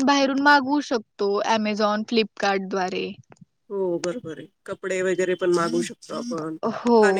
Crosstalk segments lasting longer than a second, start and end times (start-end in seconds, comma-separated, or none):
none